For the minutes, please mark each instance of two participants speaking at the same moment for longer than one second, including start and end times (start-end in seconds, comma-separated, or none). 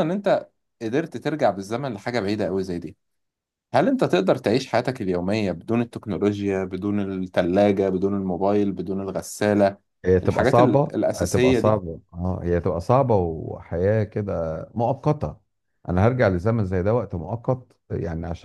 10.2-11.8